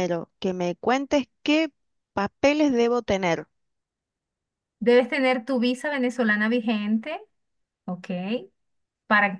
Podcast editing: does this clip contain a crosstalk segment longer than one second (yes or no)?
no